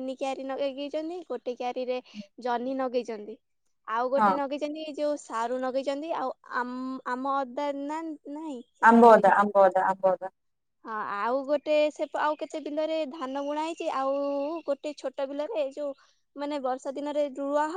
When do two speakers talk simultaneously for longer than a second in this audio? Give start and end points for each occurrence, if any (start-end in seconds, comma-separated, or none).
none